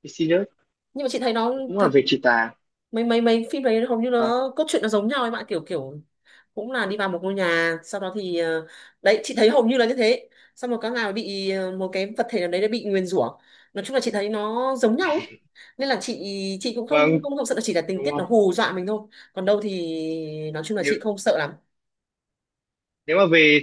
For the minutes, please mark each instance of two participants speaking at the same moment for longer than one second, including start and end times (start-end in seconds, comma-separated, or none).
none